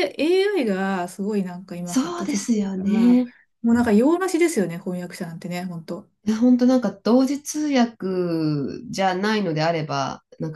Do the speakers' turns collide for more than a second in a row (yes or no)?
yes